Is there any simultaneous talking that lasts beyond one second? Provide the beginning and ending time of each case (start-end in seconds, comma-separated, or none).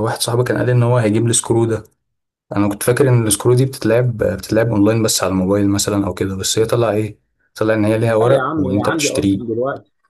8.1-9.4